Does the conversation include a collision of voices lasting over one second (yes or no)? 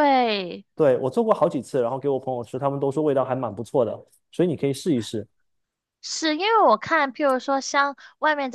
no